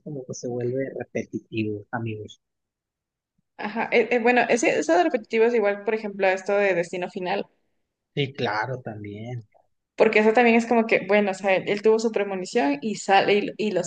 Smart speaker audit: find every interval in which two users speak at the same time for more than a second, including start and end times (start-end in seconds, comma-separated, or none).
none